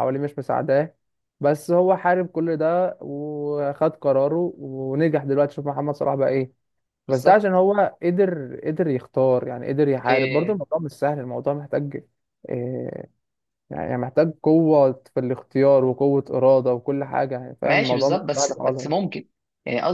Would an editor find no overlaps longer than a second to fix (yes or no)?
no